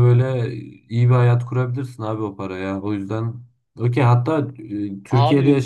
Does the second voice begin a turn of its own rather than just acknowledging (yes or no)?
yes